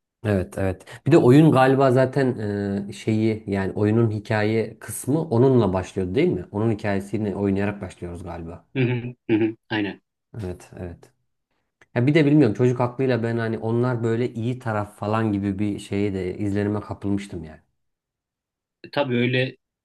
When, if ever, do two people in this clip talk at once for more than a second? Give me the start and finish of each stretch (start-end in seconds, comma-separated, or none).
none